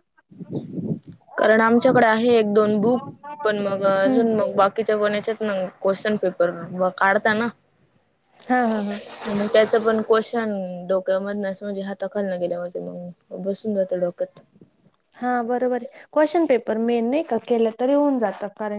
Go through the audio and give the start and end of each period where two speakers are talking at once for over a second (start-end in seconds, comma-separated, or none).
none